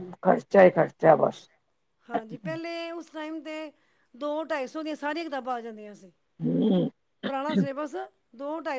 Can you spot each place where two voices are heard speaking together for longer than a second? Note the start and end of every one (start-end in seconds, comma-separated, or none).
none